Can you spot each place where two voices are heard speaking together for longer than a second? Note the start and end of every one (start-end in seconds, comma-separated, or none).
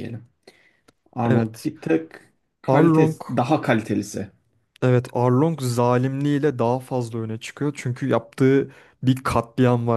none